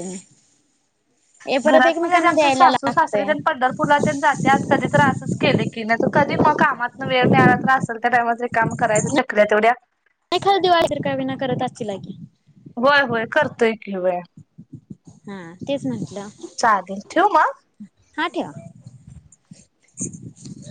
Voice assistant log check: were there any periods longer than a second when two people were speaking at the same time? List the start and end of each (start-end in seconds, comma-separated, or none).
1.7-3.6